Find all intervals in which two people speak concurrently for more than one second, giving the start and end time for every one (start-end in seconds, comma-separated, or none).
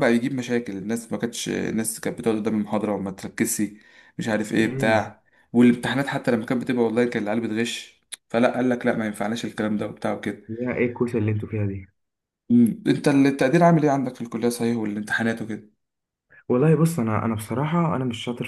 none